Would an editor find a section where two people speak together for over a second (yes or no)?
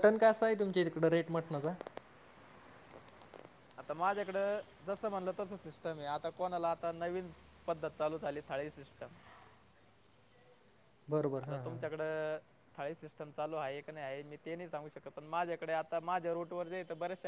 no